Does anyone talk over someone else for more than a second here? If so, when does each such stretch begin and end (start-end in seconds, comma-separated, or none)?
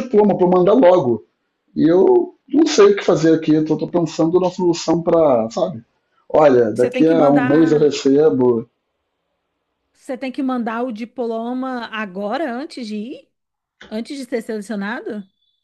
6.7-8.0